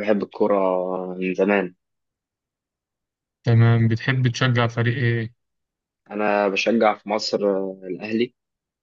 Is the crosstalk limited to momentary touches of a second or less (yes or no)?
yes